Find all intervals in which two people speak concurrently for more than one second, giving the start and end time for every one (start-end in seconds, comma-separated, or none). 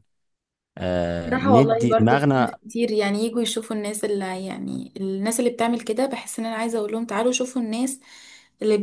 1.3-2.6